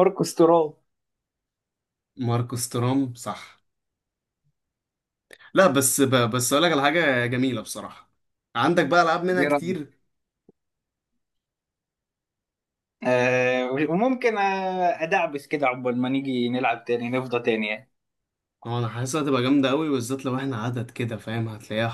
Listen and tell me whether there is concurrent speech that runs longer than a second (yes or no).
no